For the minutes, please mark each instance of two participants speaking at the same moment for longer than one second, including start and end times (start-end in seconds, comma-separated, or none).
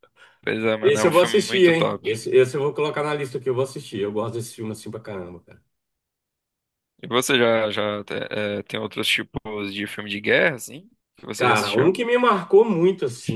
0.8-2.0